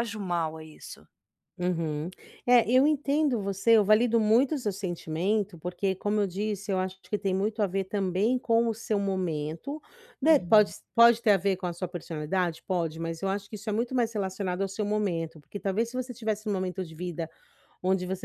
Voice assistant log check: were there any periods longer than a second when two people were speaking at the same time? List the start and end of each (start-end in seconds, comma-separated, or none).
none